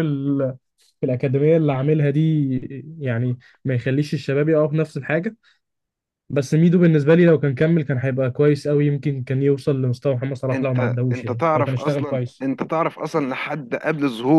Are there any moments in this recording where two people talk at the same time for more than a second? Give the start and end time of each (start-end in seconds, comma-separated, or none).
10.5-12.4